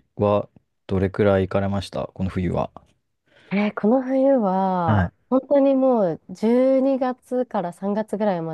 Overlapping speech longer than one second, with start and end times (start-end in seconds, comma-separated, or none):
none